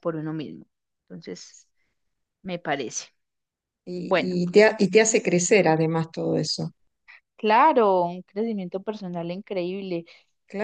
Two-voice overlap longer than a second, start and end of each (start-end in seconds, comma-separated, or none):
none